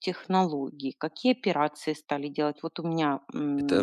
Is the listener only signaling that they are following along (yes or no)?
no